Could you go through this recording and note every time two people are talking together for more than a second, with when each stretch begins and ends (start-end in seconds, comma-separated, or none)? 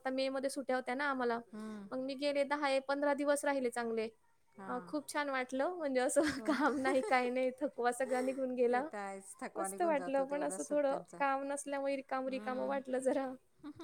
9.6-11.2